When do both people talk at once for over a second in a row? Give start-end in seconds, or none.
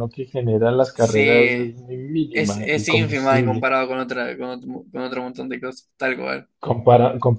2.3-3.7